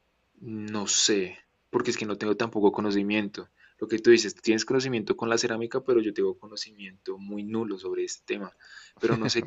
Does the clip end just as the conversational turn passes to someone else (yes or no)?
no